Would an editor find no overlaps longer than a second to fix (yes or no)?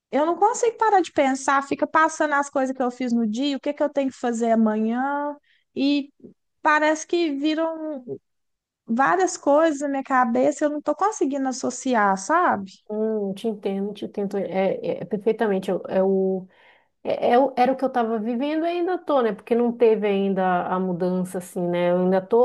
yes